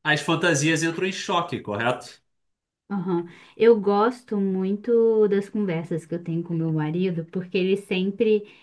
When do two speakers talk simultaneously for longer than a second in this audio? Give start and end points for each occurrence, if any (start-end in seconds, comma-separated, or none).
none